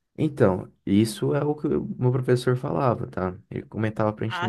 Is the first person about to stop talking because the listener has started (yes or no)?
yes